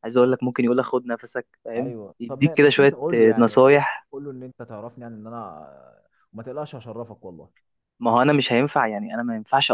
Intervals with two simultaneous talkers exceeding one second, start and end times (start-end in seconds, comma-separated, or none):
1.8-4.1